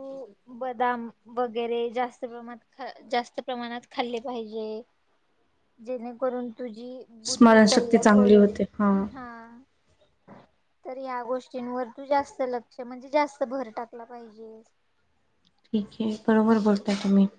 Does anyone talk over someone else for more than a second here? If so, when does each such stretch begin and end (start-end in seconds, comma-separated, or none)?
7.3-8.5